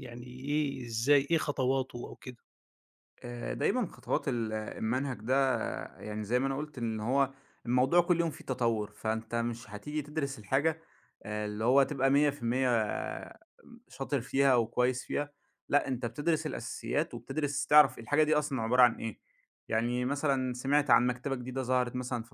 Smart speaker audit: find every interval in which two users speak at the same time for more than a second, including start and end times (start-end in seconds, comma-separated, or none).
none